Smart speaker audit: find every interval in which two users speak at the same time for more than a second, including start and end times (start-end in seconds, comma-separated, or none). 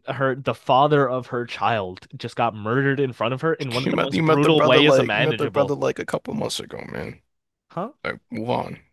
3.8-5.8